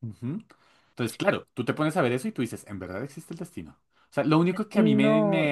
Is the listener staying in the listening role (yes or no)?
yes